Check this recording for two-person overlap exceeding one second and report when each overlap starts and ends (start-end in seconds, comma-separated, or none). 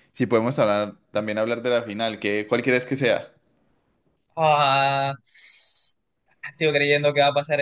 none